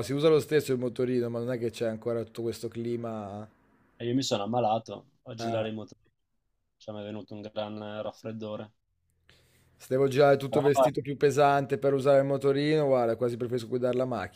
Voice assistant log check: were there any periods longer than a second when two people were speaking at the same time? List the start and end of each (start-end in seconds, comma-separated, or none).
none